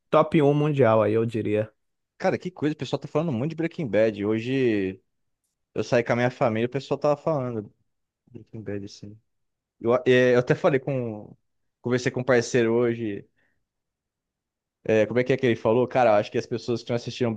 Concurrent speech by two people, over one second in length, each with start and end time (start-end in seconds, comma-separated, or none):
none